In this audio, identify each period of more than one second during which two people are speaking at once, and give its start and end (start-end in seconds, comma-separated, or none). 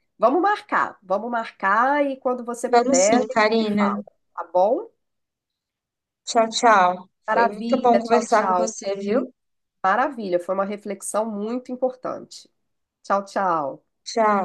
2.7-4.0, 7.3-8.7